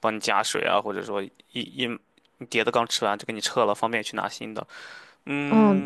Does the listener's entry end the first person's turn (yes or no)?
yes